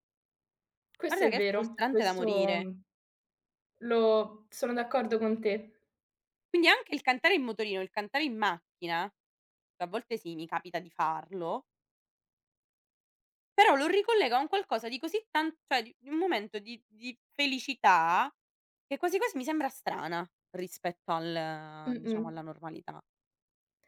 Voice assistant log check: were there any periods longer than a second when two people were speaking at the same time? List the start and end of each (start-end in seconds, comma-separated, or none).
1.1-2.7